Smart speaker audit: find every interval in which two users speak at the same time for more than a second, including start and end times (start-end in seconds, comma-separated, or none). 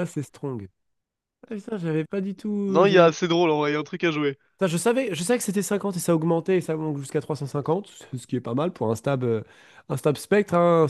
none